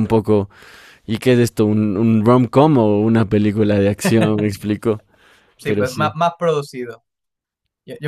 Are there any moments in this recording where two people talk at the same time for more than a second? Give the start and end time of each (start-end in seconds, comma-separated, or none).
none